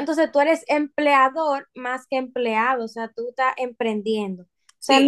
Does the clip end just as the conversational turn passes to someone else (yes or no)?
no